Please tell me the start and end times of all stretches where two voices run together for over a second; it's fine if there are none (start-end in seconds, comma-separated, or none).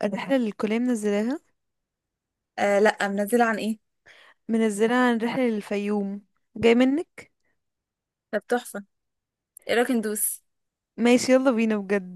none